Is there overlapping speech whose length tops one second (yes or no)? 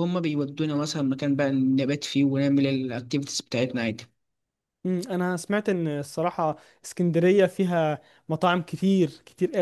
no